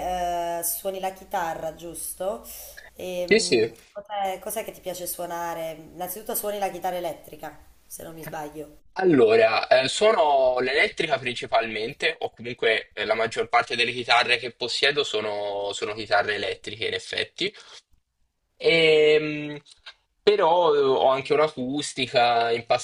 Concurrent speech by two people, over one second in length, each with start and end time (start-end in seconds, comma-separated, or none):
none